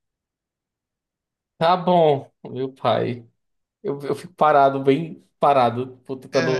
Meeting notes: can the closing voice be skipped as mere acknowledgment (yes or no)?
no